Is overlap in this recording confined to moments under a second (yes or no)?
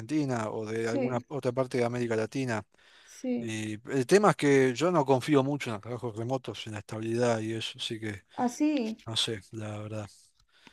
yes